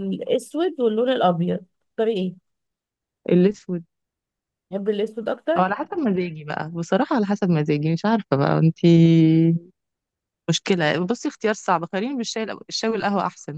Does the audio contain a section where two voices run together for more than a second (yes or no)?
no